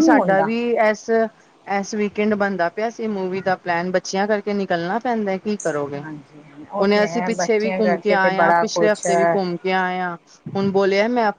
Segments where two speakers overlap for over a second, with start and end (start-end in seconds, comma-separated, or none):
6.8-9.3